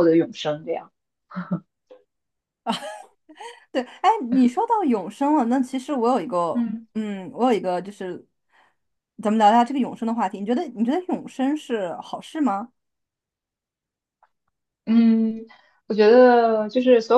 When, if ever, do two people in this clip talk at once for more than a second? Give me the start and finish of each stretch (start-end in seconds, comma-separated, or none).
none